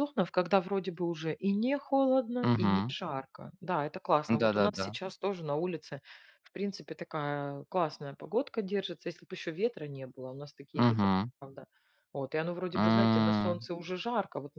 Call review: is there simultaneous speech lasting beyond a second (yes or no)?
no